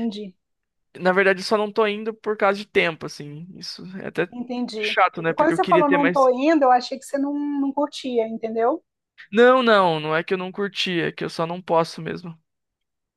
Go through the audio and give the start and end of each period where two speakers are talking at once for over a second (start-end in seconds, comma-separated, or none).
4.8-6.3